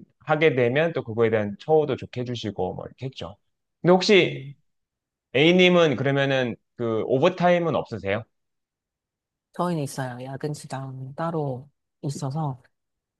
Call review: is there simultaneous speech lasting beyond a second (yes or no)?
no